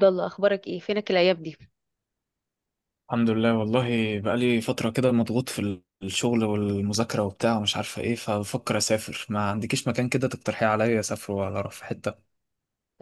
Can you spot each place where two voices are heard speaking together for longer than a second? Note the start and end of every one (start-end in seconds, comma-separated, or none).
none